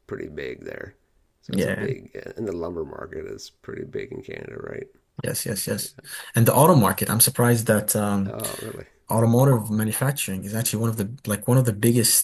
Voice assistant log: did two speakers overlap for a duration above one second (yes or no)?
no